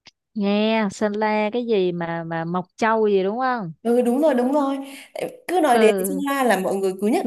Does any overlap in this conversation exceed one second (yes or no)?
no